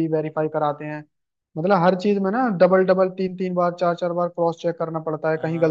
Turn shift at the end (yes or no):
yes